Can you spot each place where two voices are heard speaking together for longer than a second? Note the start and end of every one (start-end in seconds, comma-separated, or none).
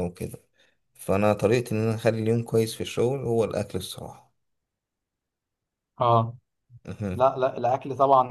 none